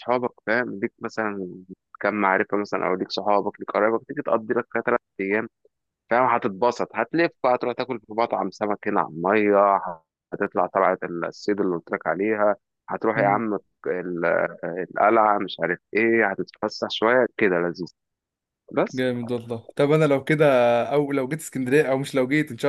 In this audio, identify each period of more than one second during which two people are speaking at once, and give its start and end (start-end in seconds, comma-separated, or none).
none